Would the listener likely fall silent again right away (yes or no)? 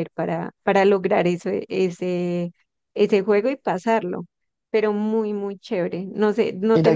no